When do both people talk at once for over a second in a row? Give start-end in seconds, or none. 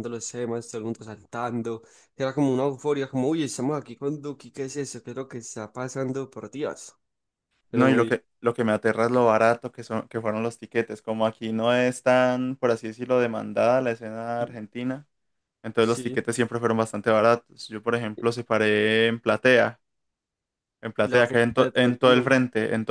21.0-22.3